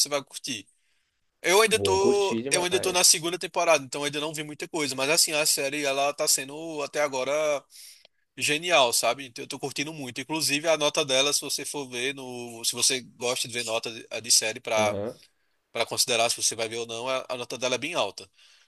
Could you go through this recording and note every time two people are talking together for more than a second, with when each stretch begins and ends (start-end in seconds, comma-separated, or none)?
1.7-3.1